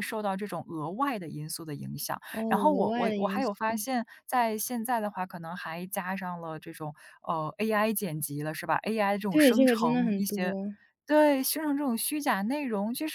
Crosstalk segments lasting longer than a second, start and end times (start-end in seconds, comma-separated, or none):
2.3-3.8, 9.3-10.6